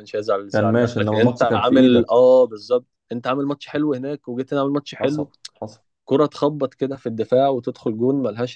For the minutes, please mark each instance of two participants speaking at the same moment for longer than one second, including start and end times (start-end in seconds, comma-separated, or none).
0.5-2.1